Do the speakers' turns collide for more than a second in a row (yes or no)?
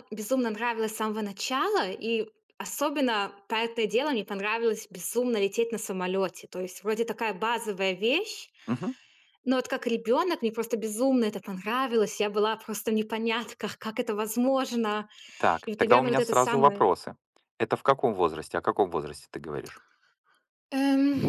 yes